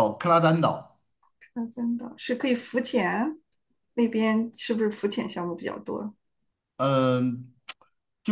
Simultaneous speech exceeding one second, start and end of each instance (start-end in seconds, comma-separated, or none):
none